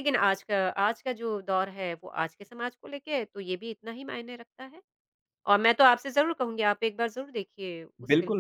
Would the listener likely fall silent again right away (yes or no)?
no